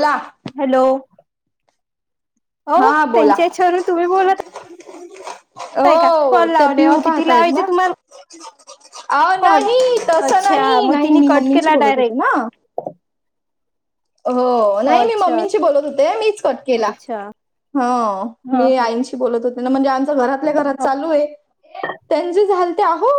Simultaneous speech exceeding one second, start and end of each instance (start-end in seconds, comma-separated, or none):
5.9-7.7, 10.3-12.3